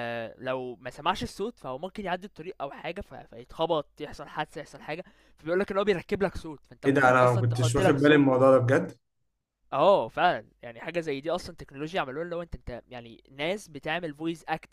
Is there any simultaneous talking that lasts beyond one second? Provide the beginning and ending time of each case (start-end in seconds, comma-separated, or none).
6.8-8.3